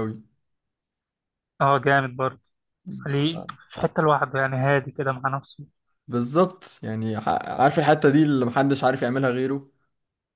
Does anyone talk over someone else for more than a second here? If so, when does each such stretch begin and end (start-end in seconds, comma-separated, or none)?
none